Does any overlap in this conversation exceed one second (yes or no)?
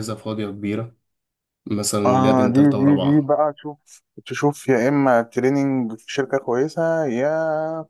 yes